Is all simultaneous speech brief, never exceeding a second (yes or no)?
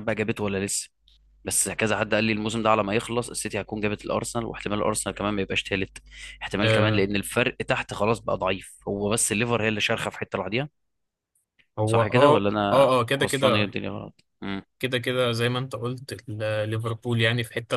no